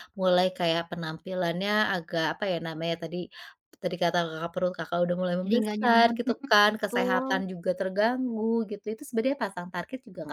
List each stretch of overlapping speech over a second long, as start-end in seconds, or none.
5.4-7.3